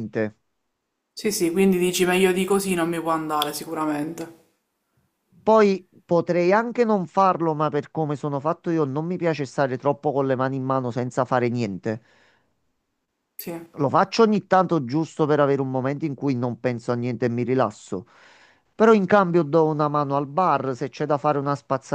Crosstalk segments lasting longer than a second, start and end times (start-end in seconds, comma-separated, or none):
none